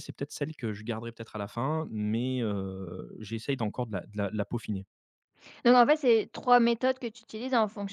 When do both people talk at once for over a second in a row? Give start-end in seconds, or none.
none